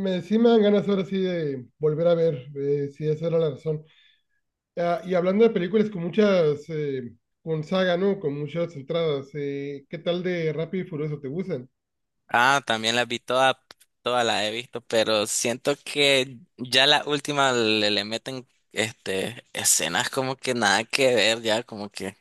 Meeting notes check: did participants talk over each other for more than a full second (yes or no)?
no